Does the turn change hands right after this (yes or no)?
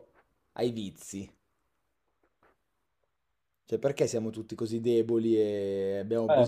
yes